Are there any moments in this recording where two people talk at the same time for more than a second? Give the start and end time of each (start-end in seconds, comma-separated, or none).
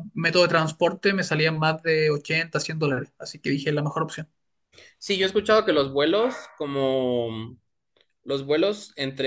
none